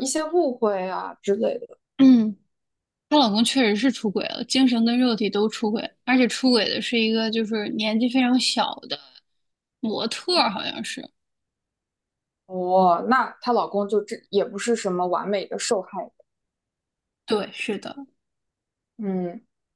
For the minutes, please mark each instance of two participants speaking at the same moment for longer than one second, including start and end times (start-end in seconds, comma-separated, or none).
none